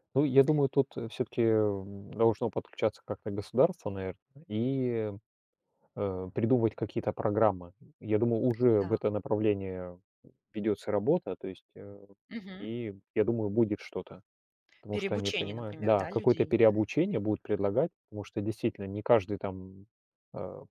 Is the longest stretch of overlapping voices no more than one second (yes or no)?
no